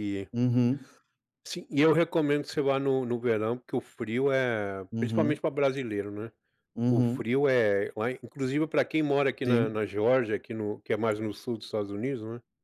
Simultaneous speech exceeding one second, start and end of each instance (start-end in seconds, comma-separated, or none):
none